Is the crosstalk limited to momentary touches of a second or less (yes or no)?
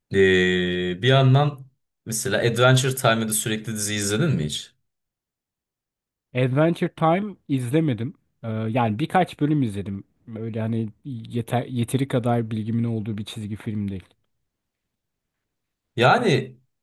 yes